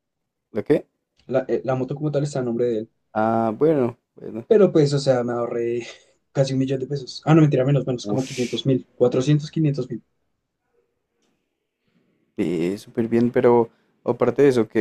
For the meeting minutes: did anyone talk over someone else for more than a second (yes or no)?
no